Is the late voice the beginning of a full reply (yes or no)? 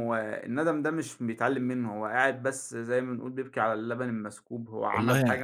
no